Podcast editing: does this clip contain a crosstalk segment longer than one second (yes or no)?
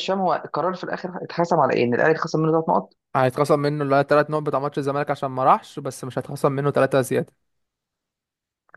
no